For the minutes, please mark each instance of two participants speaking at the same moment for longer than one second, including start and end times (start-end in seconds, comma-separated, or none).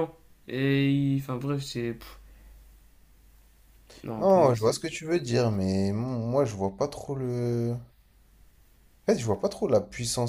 none